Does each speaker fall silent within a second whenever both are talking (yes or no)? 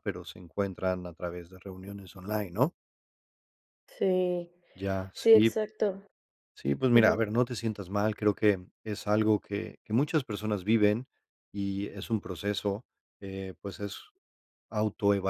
yes